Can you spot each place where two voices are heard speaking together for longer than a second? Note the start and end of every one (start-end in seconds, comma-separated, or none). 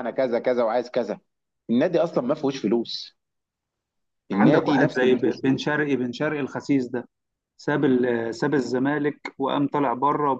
4.3-5.6